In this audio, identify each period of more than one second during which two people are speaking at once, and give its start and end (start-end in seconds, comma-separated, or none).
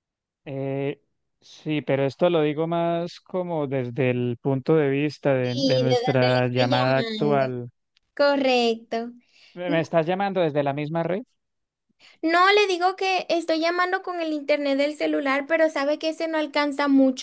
5.4-7.5